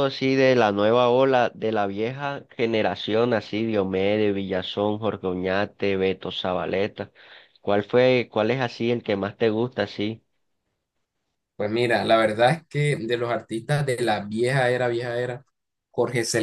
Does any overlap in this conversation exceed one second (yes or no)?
no